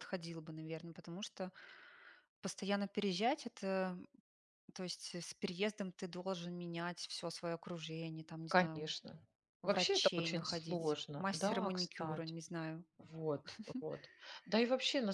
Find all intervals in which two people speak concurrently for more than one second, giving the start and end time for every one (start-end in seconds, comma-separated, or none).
9.6-12.3